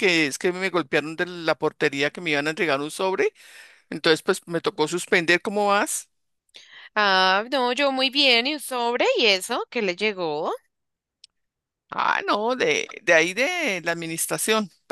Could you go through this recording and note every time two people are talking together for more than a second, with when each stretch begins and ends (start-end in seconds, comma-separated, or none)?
none